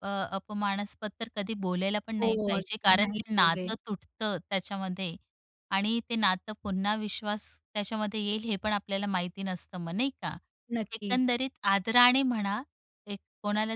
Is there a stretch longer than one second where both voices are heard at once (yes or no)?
yes